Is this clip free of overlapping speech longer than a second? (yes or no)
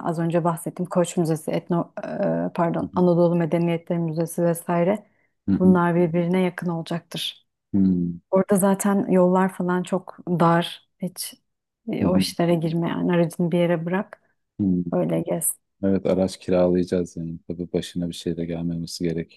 yes